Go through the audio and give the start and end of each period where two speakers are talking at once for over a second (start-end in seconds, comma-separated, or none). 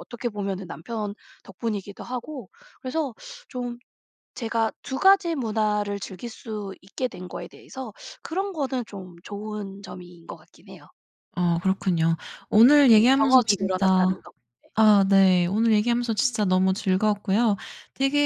12.9-14.2